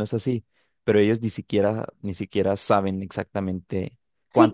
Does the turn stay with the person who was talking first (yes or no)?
no